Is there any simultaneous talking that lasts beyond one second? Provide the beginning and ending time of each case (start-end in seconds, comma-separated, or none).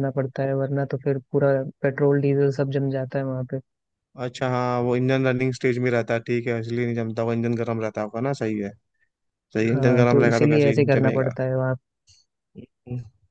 9.7-11.3